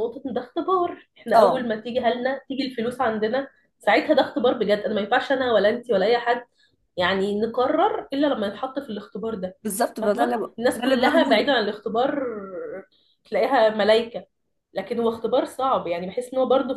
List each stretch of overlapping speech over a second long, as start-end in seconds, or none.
10.0-11.5